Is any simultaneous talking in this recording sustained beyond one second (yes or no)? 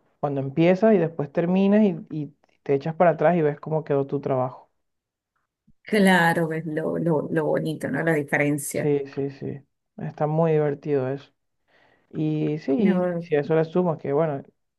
no